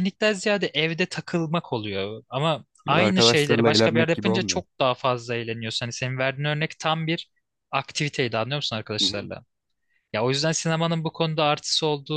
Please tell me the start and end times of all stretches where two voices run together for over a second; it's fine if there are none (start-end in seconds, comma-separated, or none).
2.9-4.6